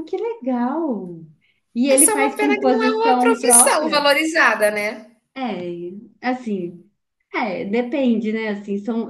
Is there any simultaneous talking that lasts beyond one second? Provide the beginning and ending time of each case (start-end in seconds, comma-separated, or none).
1.9-4.1